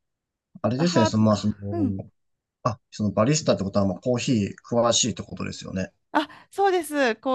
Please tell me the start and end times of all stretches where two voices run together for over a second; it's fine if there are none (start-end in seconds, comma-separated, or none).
none